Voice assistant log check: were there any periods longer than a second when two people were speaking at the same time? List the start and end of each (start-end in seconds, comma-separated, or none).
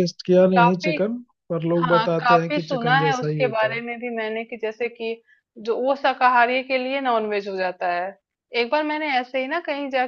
1.8-3.8